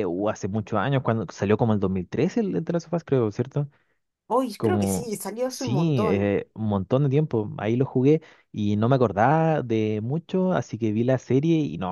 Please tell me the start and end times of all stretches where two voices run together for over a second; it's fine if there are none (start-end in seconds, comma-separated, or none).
4.6-6.3